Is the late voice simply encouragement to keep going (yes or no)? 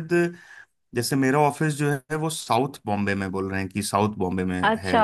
no